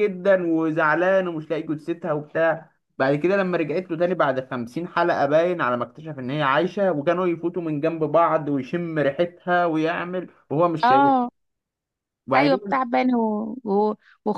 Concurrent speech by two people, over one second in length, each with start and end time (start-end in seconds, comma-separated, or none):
none